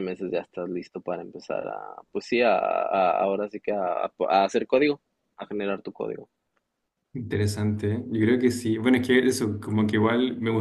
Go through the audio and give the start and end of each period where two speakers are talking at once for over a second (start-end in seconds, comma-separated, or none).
none